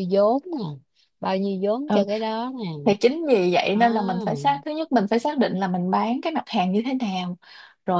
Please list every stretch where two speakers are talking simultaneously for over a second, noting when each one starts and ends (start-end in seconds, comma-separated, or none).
none